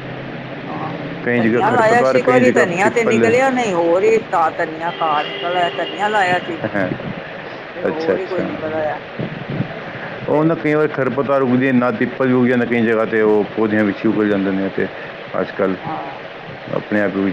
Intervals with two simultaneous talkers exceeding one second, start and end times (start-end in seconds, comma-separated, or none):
1.4-3.3